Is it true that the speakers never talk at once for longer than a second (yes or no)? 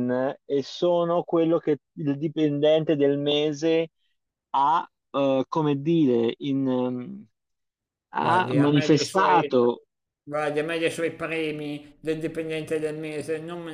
no